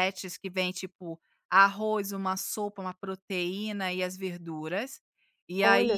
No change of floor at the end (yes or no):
yes